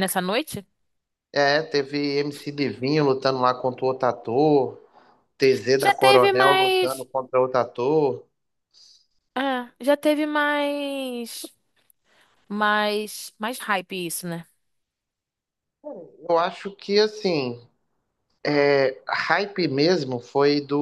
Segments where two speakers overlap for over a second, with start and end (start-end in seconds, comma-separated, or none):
5.8-7.1